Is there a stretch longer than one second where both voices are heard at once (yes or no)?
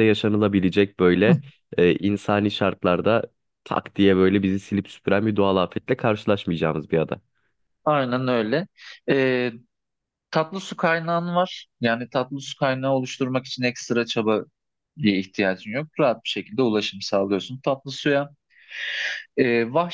no